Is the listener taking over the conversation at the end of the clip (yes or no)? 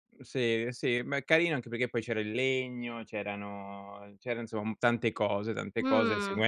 no